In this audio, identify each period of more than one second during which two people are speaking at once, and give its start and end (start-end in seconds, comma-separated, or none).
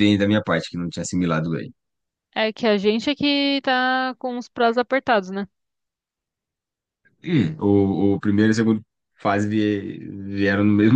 none